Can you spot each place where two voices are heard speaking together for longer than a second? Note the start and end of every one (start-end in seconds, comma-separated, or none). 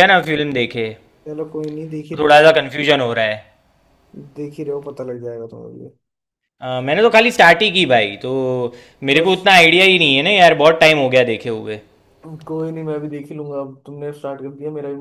none